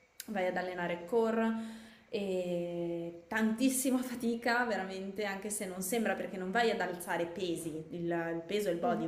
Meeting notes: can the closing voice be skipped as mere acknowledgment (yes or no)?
yes